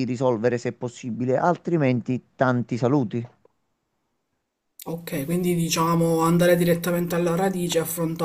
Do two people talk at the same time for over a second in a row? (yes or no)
no